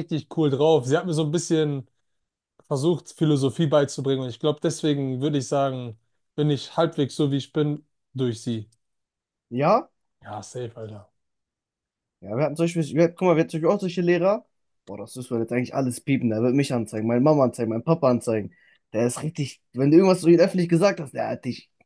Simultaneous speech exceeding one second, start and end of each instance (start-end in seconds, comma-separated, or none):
none